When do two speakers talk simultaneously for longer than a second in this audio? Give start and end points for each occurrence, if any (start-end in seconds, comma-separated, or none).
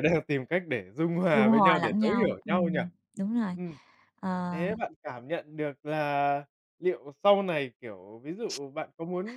1.3-2.8